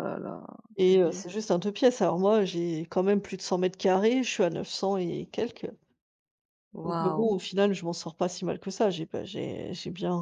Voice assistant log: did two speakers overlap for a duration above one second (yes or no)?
no